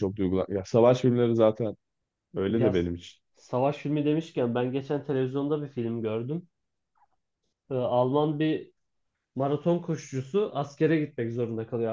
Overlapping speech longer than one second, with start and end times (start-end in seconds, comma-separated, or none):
none